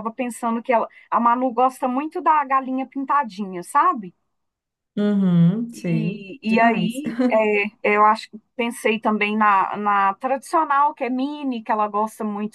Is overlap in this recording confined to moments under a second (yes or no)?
no